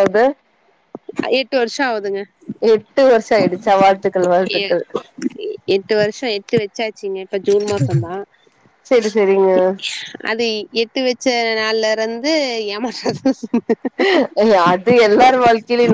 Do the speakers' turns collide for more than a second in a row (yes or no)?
no